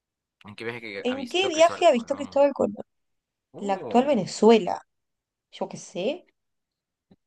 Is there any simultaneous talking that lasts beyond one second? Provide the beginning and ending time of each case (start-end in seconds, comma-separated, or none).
1.0-2.5